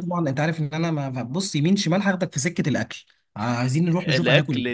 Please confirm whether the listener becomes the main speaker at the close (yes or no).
yes